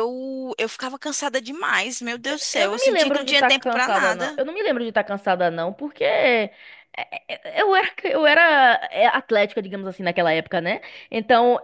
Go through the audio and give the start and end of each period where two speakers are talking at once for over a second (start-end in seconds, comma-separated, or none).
2.5-4.4